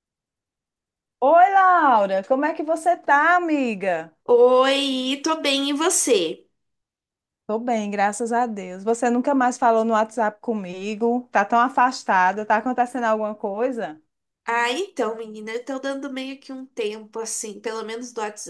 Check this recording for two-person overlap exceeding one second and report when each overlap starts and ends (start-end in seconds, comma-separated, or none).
none